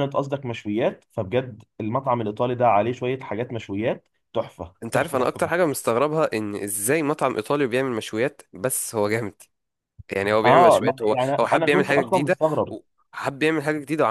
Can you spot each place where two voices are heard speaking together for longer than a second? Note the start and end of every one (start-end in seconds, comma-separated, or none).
10.4-12.3